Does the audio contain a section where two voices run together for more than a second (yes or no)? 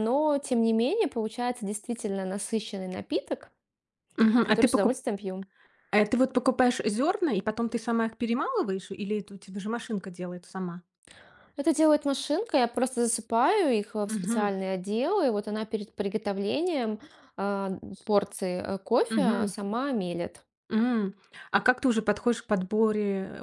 no